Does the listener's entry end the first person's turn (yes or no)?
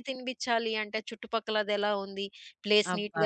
no